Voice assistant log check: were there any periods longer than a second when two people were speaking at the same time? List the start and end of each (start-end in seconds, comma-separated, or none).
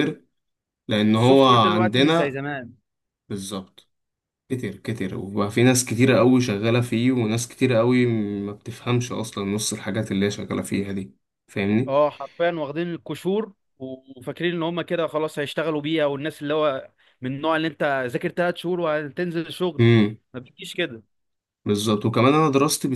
1.2-2.4